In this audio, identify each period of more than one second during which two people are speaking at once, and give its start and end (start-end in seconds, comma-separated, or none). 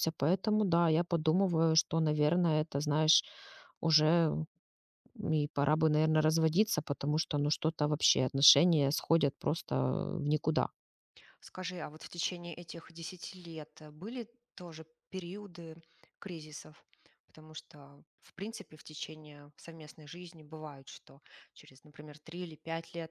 none